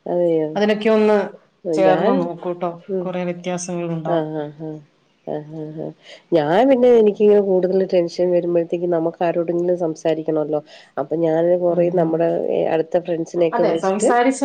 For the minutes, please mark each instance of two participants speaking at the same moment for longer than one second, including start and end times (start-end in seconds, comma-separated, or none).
none